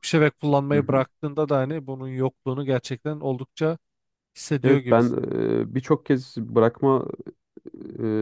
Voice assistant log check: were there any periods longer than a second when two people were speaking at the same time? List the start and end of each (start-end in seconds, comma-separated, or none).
none